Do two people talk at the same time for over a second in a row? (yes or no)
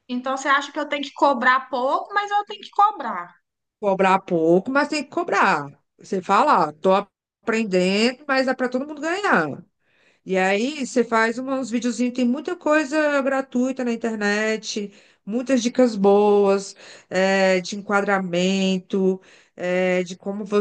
no